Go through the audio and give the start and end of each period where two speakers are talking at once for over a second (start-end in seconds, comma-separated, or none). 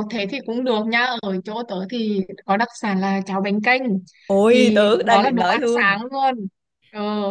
4.5-6.0